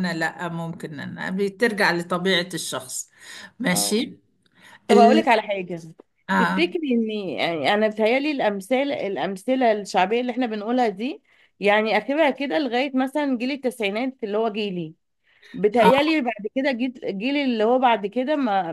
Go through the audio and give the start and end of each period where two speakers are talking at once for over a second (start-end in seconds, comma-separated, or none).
none